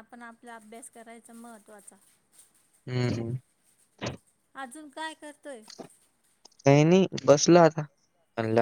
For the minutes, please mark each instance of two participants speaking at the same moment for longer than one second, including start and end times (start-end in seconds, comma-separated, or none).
none